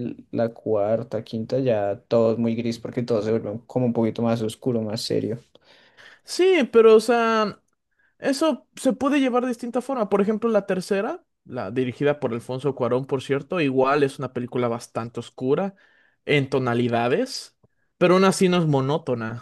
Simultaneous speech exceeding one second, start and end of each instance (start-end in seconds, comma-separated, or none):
none